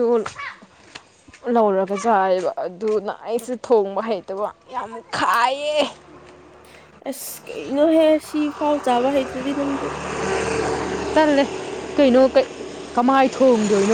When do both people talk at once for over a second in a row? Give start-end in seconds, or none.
none